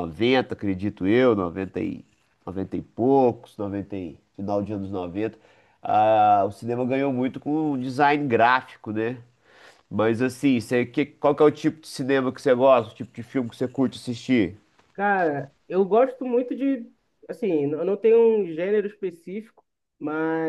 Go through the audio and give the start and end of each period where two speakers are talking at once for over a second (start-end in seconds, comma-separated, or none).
none